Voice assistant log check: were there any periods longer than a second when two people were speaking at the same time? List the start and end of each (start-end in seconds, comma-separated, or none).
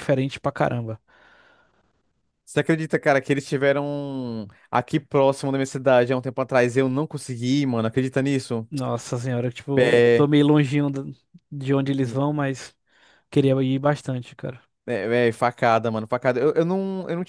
none